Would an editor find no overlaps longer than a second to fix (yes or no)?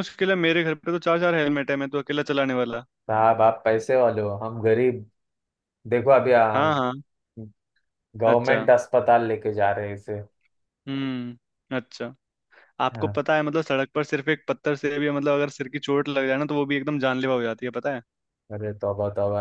yes